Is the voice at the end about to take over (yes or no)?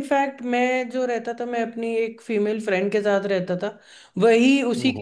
no